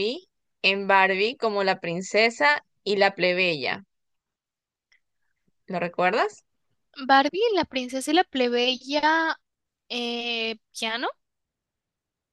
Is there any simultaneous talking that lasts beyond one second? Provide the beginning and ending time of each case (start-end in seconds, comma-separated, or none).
none